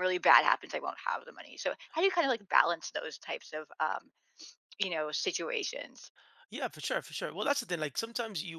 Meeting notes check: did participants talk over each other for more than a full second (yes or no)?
no